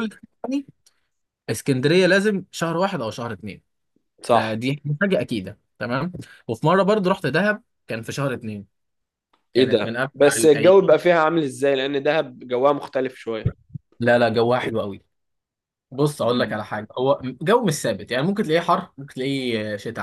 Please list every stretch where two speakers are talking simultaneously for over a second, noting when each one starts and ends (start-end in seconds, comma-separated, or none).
9.6-11.0